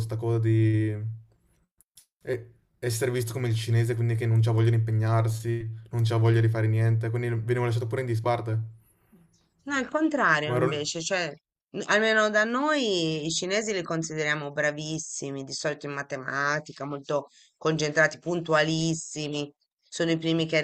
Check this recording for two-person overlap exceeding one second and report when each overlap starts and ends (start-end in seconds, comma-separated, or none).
none